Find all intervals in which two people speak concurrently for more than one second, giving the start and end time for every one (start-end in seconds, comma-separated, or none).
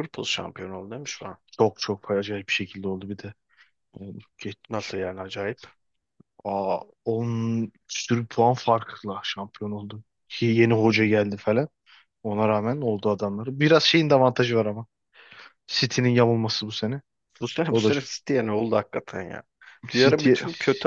none